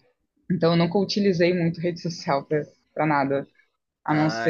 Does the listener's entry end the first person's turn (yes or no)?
yes